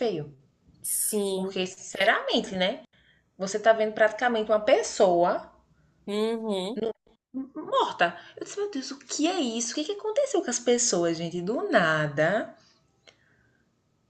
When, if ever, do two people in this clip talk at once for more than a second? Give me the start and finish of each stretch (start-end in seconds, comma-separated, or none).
none